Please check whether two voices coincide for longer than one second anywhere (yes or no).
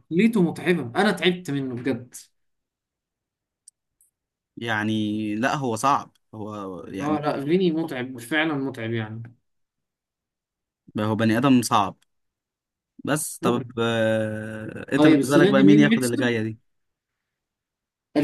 yes